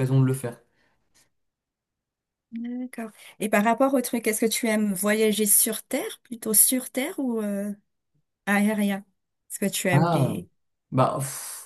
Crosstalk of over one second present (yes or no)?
no